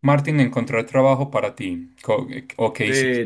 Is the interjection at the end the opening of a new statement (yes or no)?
yes